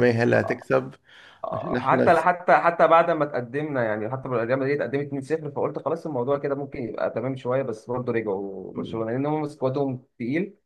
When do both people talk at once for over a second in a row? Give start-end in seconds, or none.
none